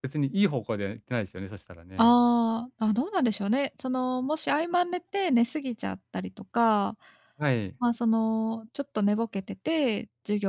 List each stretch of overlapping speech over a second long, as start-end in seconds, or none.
none